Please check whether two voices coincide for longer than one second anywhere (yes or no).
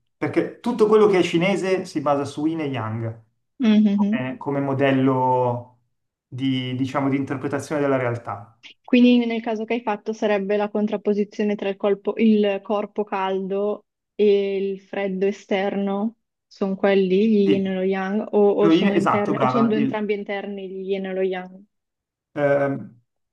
yes